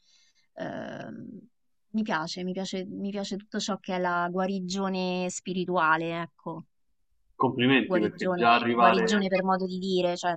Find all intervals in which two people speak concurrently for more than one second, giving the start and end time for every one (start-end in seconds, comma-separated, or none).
7.8-9.3